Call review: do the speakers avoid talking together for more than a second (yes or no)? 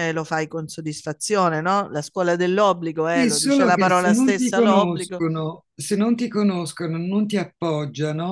no